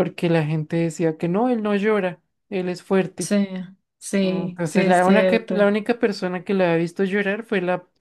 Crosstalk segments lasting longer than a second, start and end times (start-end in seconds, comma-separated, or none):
4.2-5.7